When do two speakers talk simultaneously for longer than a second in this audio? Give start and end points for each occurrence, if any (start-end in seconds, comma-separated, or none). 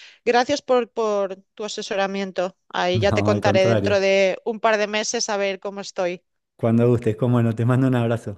2.9-4.1